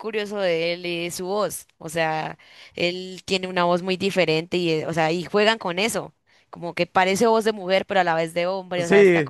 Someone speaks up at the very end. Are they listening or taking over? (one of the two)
taking over